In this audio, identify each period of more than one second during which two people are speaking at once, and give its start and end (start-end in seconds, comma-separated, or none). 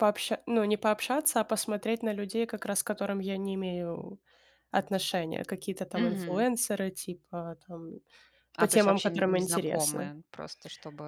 8.6-10.1